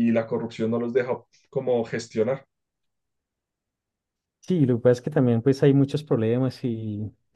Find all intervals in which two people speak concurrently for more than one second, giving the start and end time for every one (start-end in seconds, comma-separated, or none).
none